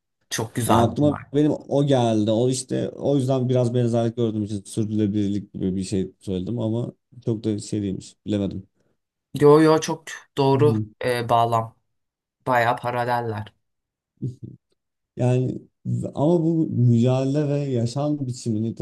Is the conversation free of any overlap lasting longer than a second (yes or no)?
yes